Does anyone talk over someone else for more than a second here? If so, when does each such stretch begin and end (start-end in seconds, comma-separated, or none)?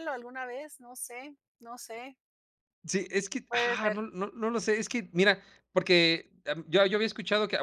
none